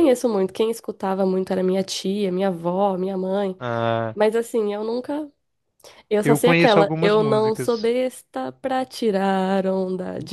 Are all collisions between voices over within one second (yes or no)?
no